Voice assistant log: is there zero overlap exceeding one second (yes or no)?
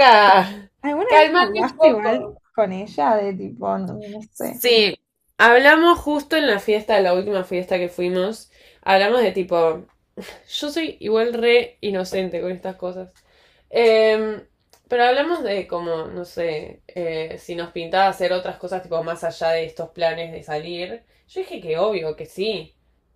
no